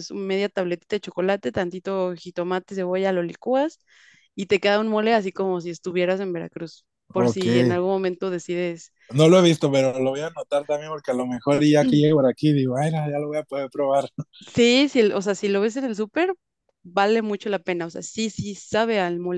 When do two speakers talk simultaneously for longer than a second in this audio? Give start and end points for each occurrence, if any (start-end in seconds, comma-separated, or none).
none